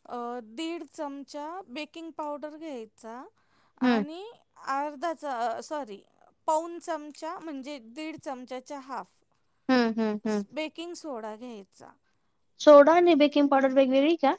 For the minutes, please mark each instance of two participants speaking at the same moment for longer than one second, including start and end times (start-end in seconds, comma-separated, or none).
none